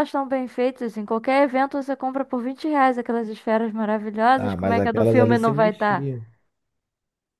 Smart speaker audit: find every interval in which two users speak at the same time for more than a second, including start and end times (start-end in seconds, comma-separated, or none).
4.4-6.1